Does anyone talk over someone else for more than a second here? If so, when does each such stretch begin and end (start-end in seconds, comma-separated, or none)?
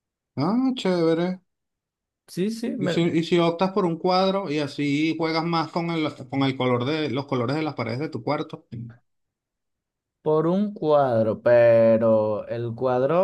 none